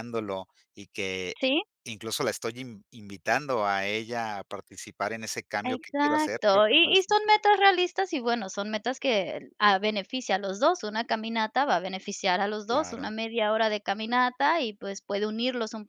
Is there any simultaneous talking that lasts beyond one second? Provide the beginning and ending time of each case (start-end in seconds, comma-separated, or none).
5.6-7.4